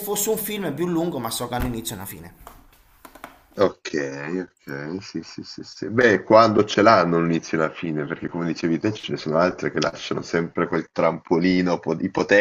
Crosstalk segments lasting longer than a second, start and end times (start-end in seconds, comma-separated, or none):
none